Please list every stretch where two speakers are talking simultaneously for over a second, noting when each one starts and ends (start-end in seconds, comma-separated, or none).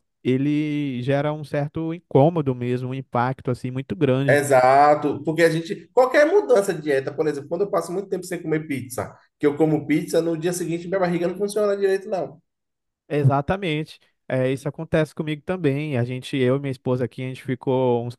none